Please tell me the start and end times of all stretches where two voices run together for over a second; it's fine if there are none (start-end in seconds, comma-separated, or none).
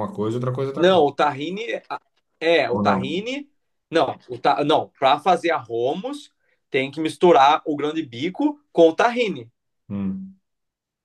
none